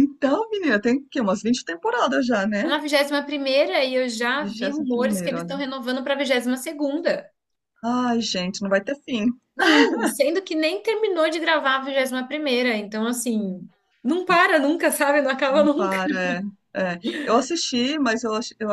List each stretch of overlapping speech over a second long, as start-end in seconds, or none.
4.4-5.6